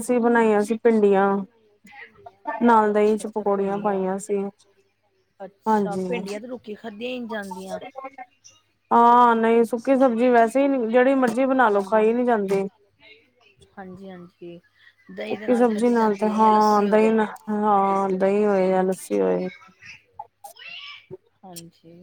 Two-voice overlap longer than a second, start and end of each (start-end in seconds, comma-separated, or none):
2.9-4.0, 15.3-17.1